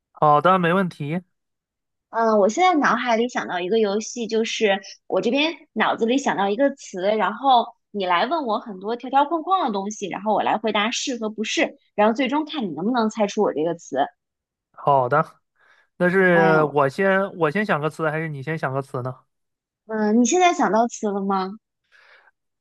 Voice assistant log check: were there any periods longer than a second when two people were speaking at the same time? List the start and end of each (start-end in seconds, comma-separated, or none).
none